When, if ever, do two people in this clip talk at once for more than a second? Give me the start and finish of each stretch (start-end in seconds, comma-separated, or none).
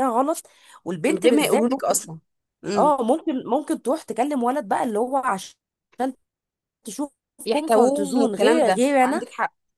7.5-9.2